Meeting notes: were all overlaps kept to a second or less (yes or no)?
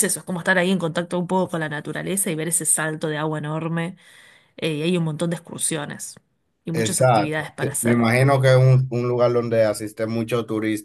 no